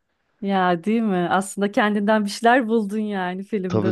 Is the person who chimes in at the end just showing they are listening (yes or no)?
no